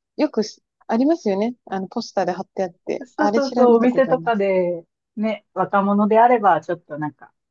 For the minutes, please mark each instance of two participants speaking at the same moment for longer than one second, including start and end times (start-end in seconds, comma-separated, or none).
3.0-4.4